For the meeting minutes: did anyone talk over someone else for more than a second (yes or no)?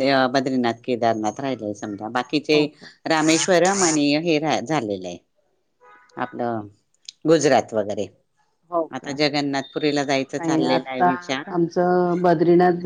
yes